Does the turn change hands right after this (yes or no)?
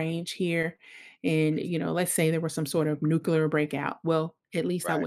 no